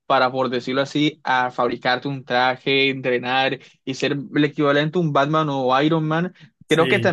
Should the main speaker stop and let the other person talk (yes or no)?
no